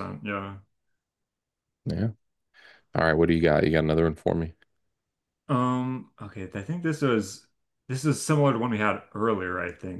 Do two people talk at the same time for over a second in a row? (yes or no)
no